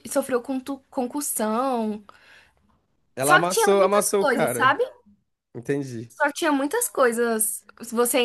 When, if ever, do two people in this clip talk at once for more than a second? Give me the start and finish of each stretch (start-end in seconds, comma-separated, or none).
3.2-4.8